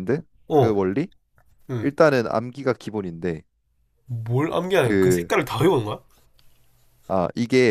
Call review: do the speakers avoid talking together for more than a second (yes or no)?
yes